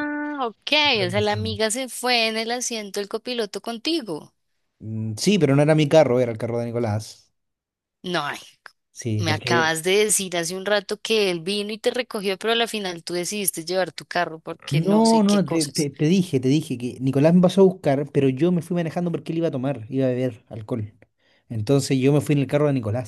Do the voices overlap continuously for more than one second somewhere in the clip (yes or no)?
yes